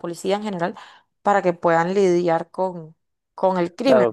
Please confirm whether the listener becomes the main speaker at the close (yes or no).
no